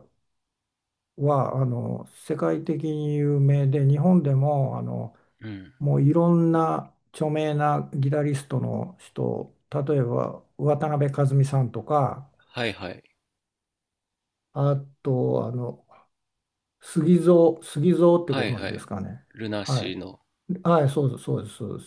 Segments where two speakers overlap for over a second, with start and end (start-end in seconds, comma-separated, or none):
none